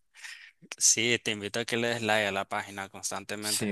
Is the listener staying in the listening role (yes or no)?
yes